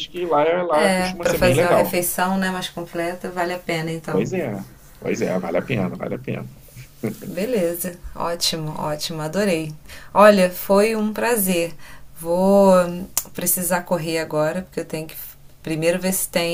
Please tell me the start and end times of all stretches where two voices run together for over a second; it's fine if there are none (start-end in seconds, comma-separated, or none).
0.7-2.0